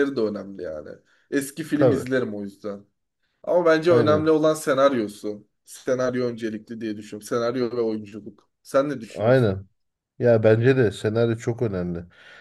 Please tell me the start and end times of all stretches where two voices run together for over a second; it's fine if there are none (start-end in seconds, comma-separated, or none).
none